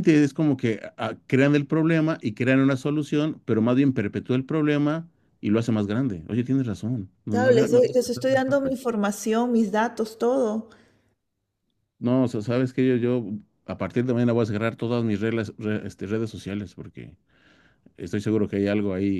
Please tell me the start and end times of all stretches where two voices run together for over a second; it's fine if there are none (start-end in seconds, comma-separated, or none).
7.3-8.7